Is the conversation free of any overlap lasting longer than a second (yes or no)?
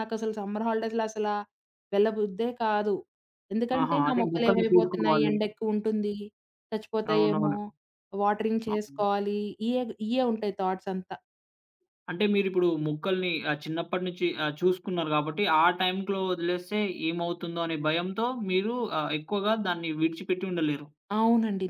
no